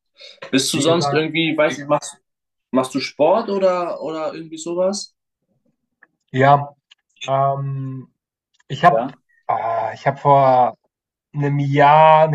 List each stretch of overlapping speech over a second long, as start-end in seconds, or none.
none